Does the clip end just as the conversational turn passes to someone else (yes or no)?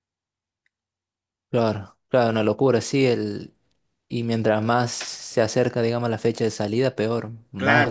yes